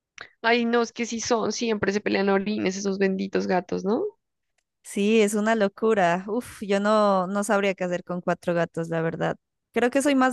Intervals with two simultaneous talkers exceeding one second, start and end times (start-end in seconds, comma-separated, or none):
none